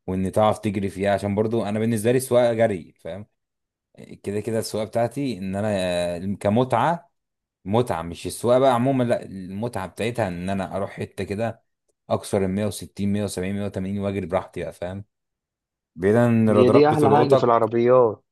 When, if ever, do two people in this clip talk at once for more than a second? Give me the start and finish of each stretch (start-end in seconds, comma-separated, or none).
16.5-17.7